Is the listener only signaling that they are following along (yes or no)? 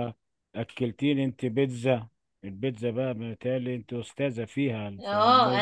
no